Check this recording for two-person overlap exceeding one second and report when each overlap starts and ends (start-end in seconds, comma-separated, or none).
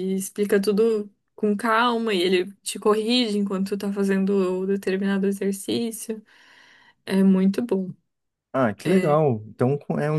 none